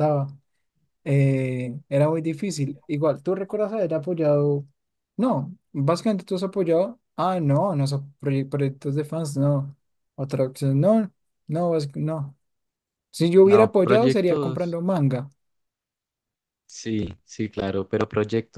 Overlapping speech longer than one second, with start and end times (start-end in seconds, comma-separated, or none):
13.4-14.8